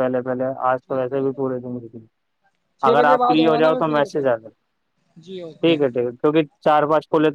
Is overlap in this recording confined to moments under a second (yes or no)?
no